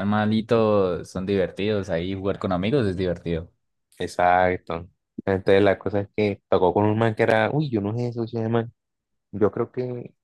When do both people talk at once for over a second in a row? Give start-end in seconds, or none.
none